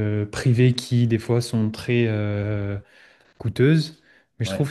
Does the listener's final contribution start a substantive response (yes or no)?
no